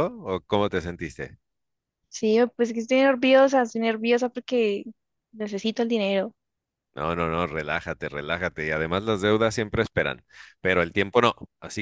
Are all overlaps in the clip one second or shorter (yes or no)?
yes